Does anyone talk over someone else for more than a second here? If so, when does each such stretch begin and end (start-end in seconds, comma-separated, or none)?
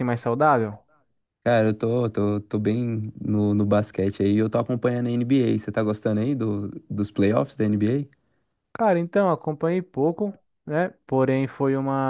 none